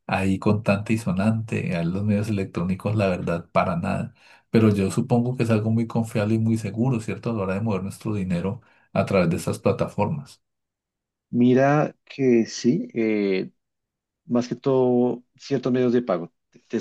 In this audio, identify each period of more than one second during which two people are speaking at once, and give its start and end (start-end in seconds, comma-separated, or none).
none